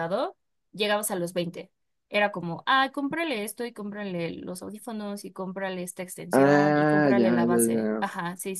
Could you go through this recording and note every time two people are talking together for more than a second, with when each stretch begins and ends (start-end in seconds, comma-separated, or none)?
6.3-8.1